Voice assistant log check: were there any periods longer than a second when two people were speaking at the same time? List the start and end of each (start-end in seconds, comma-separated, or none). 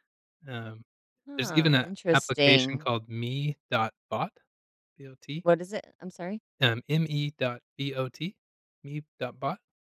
1.4-2.9